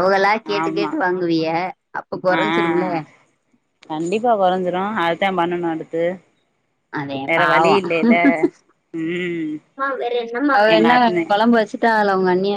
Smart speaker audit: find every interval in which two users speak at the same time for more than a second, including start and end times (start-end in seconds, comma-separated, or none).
none